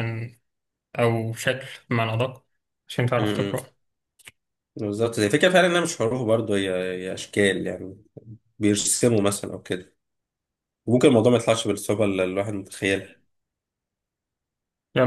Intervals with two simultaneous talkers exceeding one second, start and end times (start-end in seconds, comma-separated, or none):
none